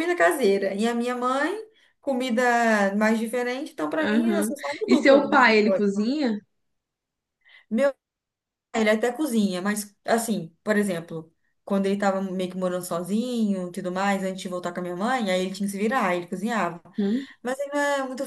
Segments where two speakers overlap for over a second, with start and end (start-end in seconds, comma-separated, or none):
4.0-5.9